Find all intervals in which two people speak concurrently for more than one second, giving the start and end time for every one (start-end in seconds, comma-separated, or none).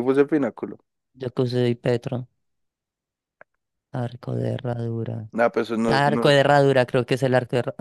none